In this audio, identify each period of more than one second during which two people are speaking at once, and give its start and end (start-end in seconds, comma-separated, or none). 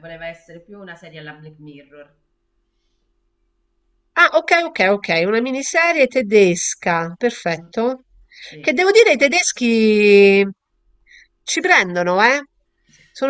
none